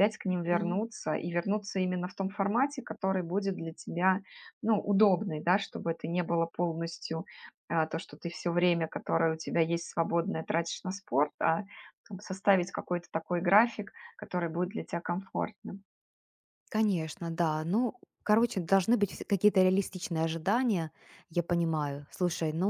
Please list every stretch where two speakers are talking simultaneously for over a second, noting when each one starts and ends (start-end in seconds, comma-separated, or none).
none